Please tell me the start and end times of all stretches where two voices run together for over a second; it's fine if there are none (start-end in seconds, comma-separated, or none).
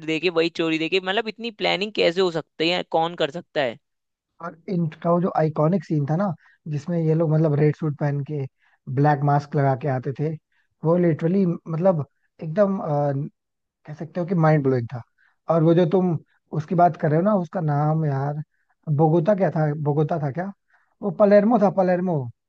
none